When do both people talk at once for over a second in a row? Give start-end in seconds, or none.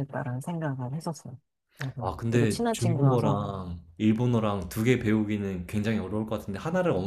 2.0-3.4